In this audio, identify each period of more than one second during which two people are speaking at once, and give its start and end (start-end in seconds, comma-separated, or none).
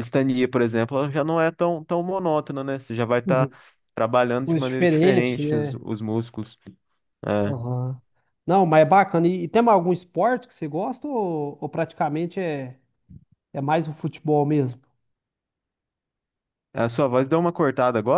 4.5-5.8